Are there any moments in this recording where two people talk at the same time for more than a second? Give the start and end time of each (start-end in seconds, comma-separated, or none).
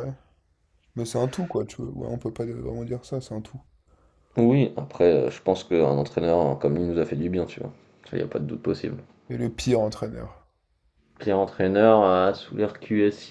none